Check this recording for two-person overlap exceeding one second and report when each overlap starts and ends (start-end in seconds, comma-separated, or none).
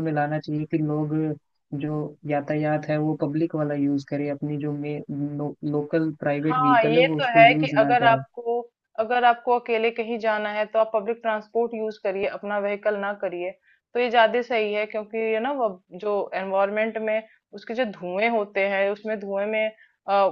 6.5-8.2